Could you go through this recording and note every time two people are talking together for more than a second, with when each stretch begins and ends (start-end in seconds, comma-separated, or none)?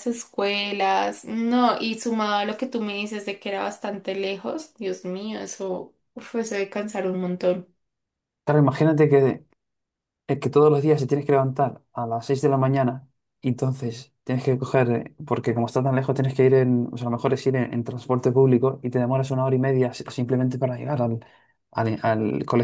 none